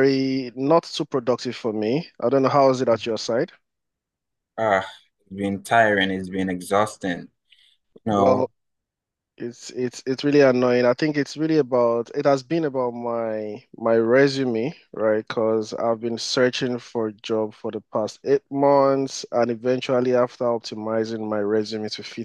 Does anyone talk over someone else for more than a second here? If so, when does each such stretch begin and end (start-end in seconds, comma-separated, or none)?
none